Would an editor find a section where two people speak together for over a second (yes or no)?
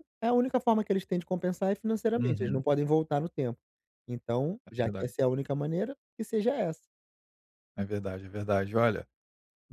no